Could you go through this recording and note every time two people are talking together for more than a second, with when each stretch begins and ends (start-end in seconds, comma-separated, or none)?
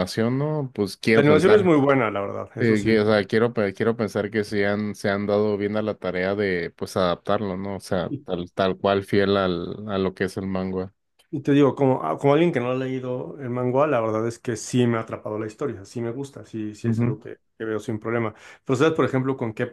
none